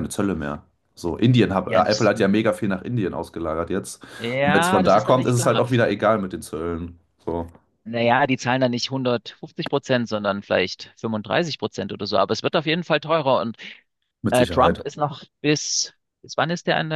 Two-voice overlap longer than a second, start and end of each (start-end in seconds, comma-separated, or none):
4.4-5.6